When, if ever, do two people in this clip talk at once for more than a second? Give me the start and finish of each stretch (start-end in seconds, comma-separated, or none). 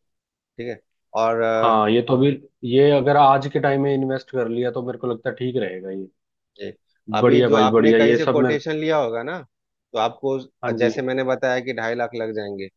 7.2-8.6